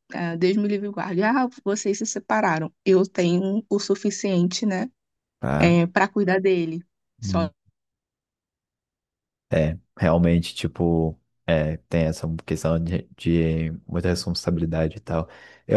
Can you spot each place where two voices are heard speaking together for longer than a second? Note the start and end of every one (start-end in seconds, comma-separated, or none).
none